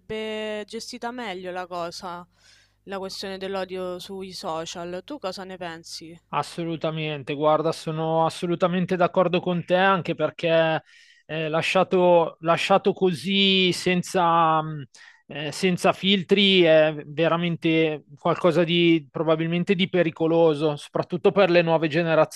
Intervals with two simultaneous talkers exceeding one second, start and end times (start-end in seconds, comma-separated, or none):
none